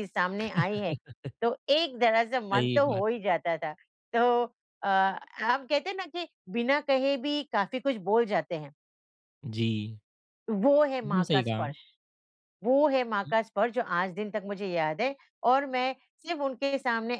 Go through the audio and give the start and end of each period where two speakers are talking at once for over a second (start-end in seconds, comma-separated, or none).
none